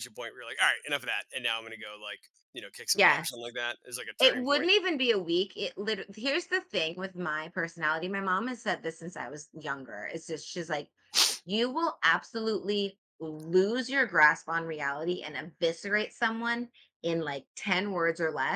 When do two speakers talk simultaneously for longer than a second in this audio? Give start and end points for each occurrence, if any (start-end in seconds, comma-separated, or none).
none